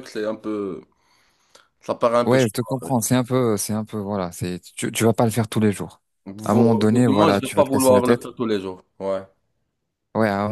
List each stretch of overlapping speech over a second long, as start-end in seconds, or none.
6.5-8.2